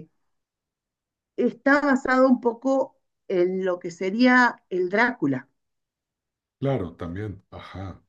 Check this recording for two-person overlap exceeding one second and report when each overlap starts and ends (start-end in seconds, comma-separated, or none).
none